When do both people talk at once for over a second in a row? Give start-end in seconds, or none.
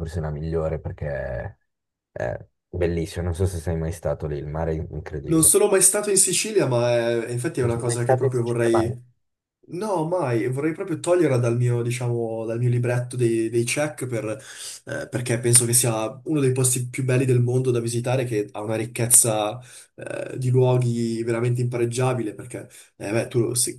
7.6-9.0